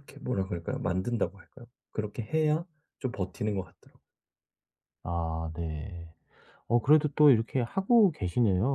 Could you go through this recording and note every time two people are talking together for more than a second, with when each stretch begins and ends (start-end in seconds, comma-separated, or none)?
none